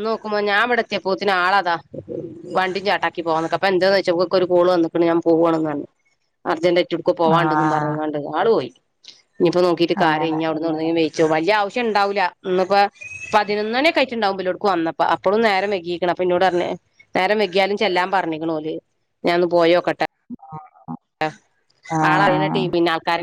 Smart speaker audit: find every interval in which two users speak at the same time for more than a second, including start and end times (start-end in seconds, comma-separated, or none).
none